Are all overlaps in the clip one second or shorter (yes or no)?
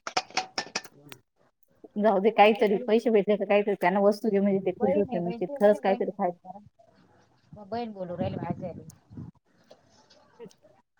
no